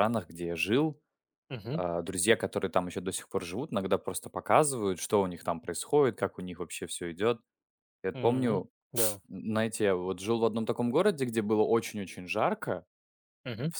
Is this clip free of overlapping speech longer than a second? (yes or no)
yes